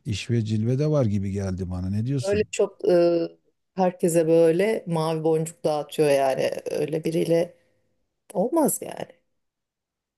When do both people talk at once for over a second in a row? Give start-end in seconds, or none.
none